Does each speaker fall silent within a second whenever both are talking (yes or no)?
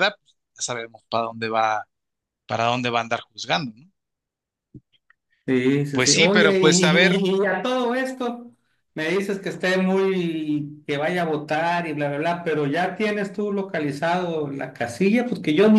no